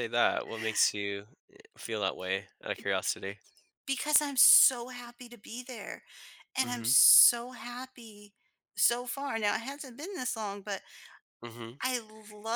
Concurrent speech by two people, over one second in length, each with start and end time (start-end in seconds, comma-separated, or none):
none